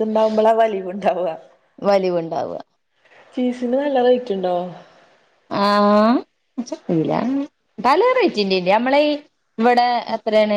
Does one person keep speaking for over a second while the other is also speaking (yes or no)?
no